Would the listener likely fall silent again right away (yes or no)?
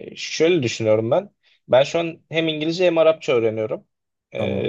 yes